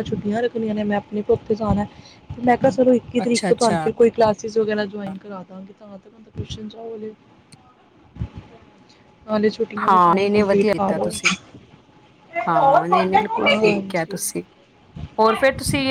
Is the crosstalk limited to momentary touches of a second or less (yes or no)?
no